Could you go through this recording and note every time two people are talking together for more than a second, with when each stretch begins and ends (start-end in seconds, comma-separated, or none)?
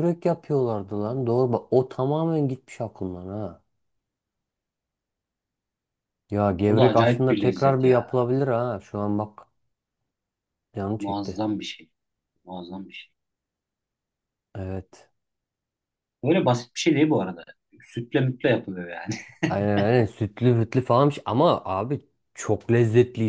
6.7-8.1